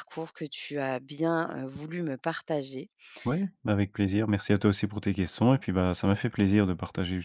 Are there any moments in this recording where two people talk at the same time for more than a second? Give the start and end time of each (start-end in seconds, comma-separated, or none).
none